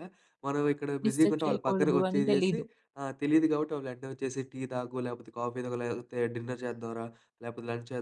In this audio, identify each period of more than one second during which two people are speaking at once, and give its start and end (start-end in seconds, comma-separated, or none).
1.1-2.6